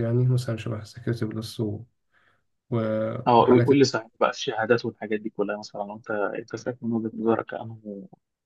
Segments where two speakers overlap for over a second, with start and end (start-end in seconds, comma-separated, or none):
none